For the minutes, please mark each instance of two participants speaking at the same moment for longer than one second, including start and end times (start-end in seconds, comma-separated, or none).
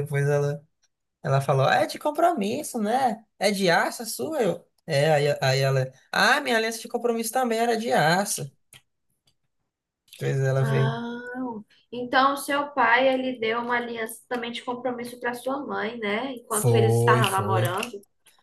16.5-17.8